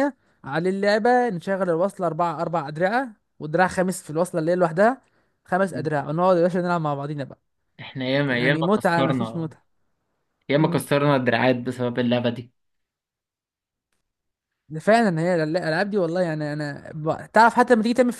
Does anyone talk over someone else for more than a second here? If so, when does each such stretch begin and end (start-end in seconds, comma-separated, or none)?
8.3-9.5